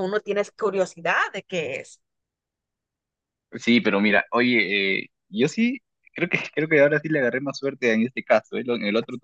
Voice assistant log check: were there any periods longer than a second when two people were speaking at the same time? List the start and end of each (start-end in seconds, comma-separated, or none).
none